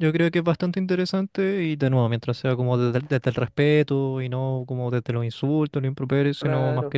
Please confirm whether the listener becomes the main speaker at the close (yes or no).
no